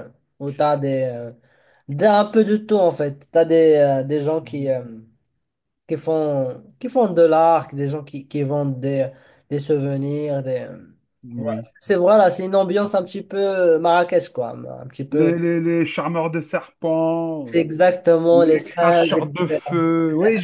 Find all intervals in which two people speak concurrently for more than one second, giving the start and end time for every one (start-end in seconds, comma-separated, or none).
18.3-19.8